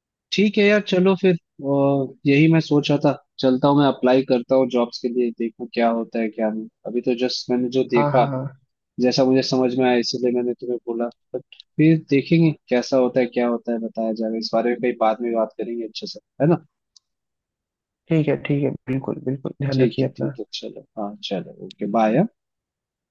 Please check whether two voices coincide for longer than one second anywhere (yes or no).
no